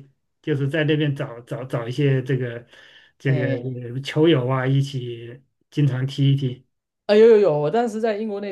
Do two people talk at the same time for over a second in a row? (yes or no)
no